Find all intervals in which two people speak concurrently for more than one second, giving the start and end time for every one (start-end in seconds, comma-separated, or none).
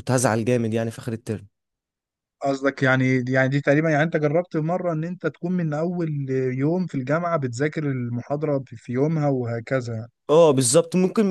none